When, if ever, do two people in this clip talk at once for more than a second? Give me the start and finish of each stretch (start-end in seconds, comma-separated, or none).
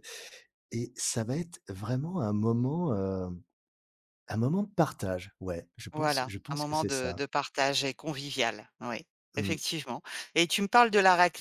5.9-7.2